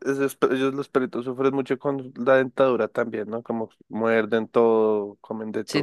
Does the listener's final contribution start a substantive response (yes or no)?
yes